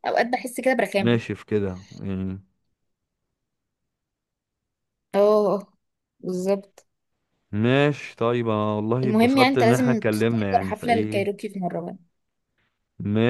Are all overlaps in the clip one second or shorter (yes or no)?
no